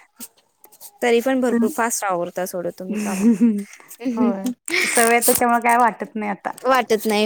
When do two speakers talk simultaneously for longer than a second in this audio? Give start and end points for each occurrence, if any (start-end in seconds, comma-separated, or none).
none